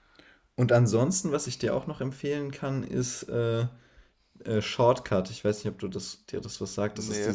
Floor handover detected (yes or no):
no